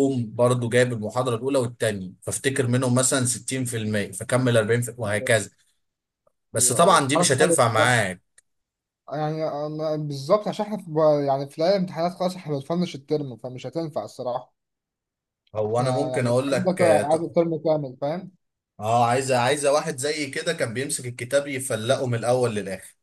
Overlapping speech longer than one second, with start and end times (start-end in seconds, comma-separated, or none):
6.6-8.0, 15.7-17.3